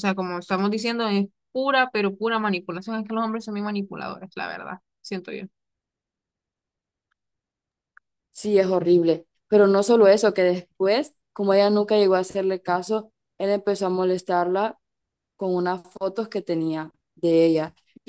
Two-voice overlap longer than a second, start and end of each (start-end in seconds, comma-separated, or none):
none